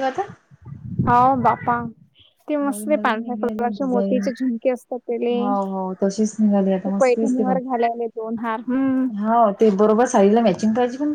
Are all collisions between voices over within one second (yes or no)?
no